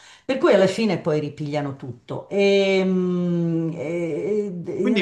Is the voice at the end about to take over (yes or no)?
yes